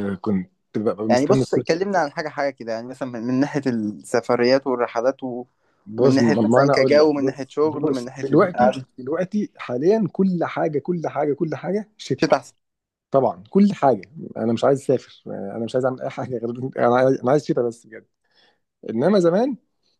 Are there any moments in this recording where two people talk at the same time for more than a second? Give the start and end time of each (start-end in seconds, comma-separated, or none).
5.9-8.9